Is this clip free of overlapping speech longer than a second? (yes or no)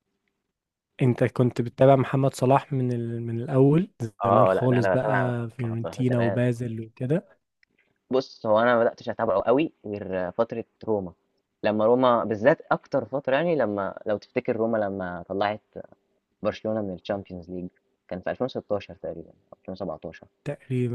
no